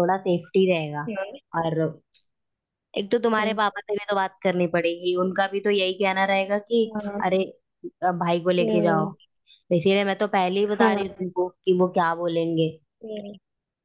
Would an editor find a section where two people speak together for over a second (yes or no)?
no